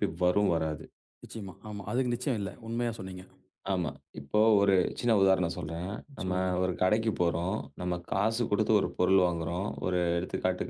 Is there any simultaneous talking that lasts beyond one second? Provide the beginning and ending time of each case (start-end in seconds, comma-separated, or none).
none